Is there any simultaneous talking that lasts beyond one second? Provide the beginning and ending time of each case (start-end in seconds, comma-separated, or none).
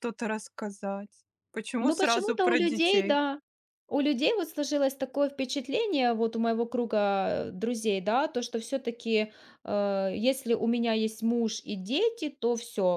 1.8-3.2